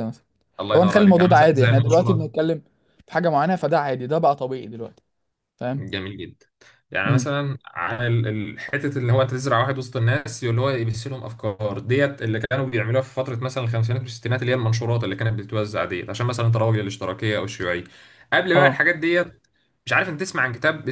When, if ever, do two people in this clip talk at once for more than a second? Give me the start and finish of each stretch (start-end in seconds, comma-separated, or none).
0.7-2.3